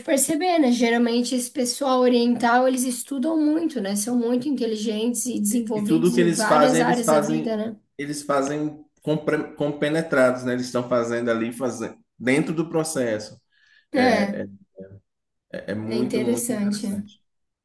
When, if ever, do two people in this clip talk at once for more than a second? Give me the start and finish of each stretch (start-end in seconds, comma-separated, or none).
5.7-7.6, 15.8-17.1